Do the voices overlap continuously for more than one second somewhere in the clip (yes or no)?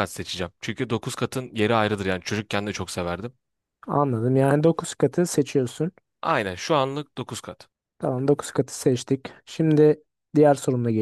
no